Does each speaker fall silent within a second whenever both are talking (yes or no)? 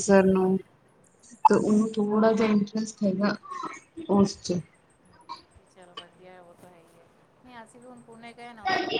yes